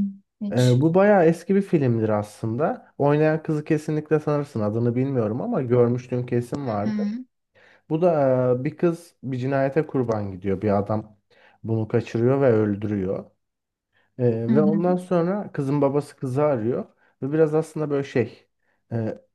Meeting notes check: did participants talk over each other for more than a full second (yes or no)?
no